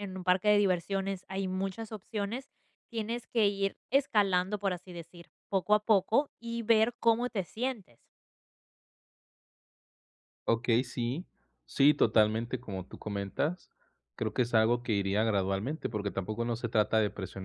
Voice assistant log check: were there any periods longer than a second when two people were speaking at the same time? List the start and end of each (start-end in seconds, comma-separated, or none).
none